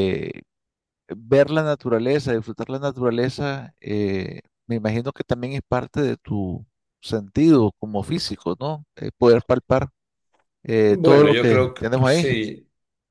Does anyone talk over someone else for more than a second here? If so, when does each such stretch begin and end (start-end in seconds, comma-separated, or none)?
10.9-12.3